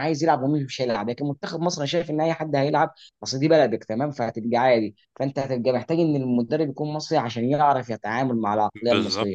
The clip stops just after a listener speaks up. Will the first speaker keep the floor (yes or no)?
yes